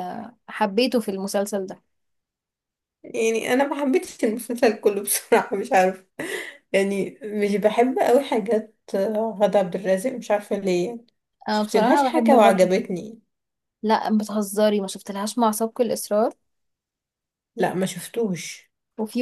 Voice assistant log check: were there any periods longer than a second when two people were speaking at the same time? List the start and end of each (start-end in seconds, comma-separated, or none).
11.5-12.7